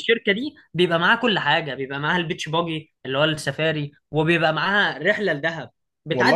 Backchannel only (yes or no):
yes